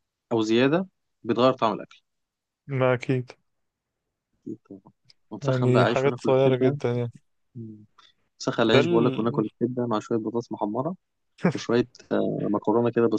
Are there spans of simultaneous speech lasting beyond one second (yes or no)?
yes